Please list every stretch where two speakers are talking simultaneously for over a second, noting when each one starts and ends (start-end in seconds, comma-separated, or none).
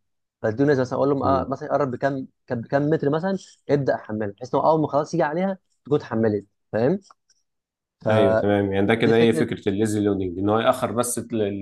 8.1-9.5